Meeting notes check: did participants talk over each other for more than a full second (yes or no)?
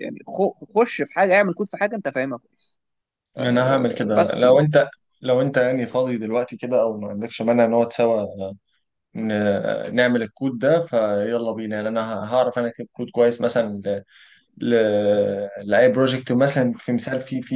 yes